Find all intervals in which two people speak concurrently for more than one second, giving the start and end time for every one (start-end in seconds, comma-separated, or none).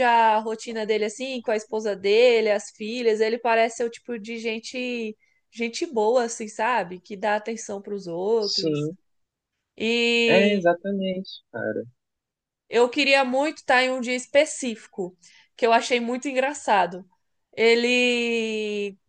none